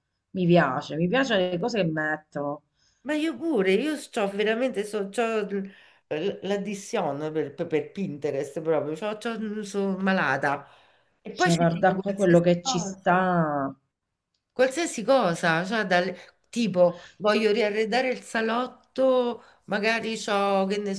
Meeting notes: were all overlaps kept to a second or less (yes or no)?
no